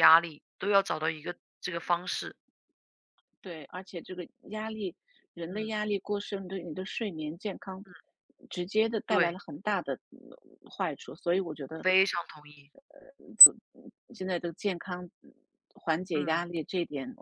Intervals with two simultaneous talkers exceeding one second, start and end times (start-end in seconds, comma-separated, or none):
none